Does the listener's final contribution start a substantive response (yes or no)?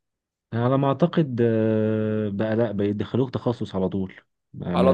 yes